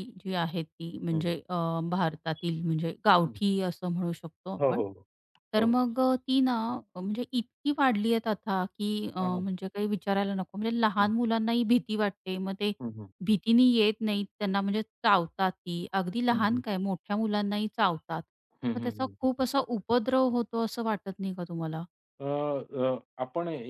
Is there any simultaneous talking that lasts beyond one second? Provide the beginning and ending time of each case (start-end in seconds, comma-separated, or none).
none